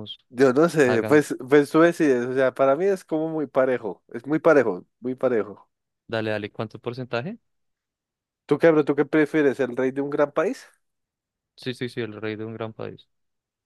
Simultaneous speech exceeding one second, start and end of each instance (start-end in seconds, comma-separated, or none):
none